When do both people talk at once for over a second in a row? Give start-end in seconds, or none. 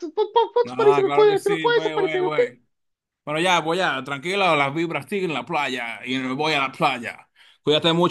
0.7-2.4